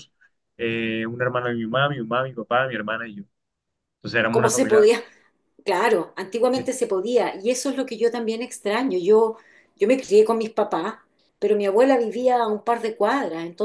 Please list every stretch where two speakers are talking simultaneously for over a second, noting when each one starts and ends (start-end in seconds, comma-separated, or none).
none